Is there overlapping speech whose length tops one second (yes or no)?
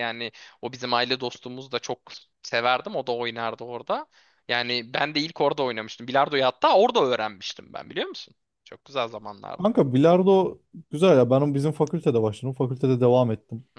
no